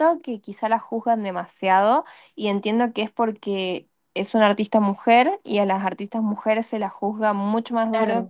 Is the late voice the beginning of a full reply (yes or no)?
yes